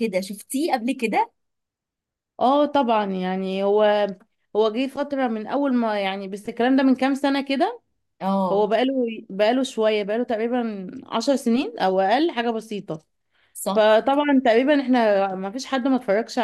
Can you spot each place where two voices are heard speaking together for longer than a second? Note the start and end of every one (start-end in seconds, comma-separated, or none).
none